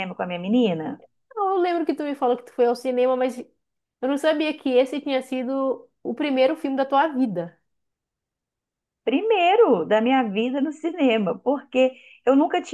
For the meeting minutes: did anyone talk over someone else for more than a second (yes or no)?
no